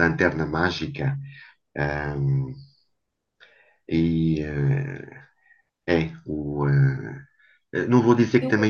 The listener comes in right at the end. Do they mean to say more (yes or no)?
no